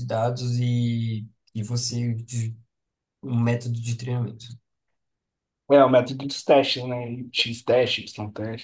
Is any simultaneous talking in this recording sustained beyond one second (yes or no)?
no